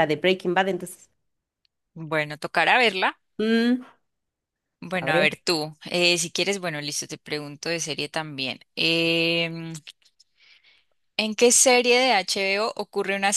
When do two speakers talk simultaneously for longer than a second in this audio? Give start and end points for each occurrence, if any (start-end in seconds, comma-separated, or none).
none